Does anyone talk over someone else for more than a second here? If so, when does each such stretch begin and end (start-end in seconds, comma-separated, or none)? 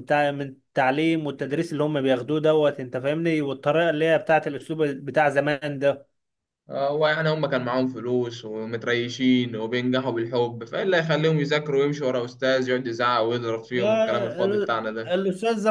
13.7-15.1